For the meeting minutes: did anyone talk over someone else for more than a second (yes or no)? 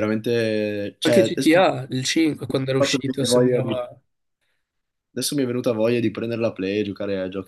yes